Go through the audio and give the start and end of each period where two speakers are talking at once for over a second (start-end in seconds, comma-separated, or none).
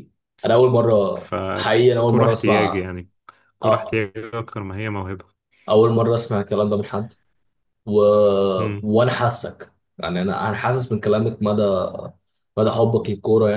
1.6-2.9